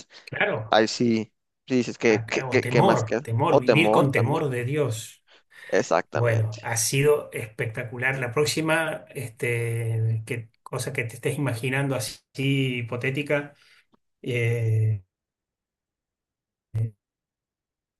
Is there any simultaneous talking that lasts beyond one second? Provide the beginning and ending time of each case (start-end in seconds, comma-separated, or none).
2.1-4.4